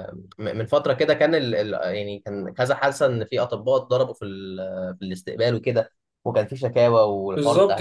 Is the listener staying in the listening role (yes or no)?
no